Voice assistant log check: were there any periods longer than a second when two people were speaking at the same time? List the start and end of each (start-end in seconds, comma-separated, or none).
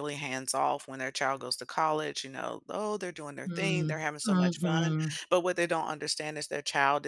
3.5-5.2